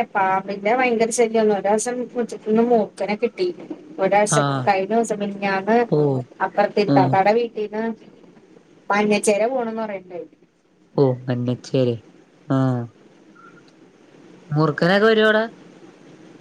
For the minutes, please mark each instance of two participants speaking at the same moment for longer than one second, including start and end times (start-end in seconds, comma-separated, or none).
none